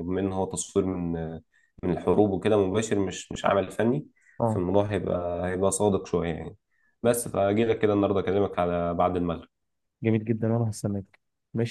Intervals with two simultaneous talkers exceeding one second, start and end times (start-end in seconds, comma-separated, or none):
none